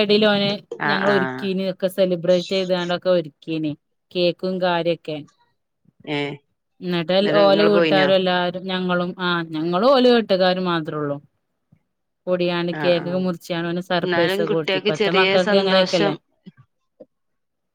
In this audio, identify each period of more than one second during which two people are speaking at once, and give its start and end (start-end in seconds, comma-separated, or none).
14.1-16.1